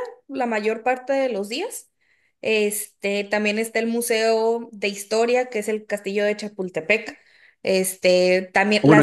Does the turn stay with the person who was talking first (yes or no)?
no